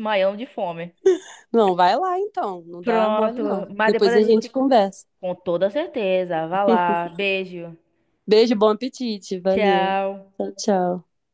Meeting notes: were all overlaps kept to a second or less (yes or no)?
no